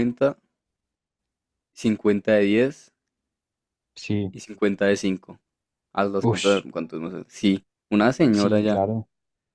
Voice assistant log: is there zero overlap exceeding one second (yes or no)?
yes